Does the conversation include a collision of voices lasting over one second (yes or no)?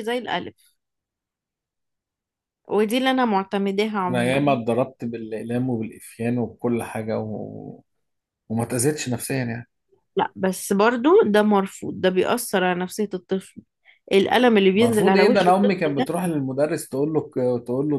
yes